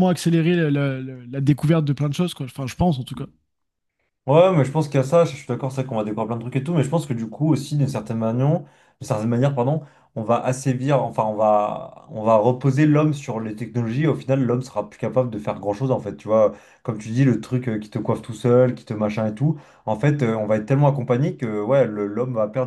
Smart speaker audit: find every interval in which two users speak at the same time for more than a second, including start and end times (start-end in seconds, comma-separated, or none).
none